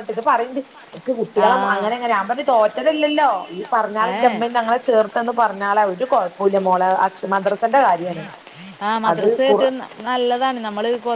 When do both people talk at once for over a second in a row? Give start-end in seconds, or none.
none